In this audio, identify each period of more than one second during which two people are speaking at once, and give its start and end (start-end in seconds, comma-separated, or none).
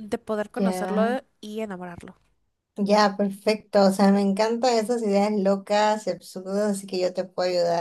none